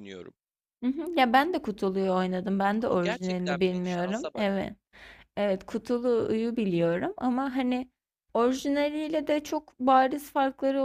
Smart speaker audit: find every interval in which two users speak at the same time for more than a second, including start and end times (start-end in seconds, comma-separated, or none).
2.9-4.5